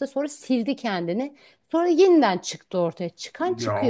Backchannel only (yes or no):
no